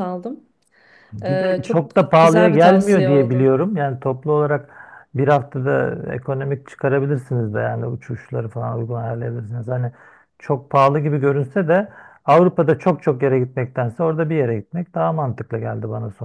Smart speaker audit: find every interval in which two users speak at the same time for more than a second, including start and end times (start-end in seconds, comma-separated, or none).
1.2-3.5